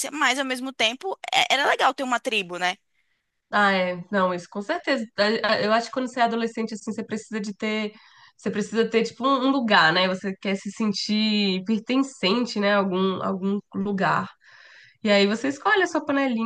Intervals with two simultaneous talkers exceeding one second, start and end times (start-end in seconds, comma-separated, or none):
none